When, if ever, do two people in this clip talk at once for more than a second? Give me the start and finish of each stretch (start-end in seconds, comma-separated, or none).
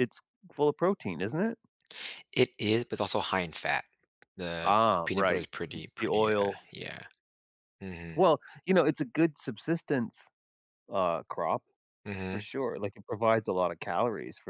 4.6-6.6